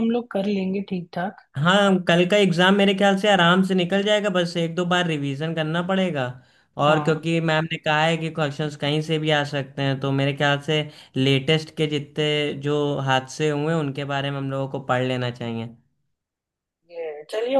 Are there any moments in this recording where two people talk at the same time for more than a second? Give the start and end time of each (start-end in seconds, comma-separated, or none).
none